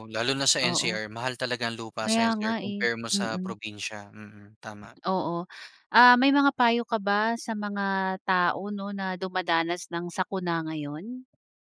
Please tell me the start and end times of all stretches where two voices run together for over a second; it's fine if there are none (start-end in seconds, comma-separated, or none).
2.0-3.6